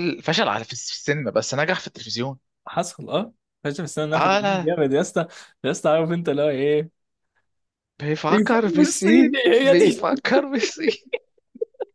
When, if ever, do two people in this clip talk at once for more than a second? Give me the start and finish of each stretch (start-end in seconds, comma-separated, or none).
8.3-10.2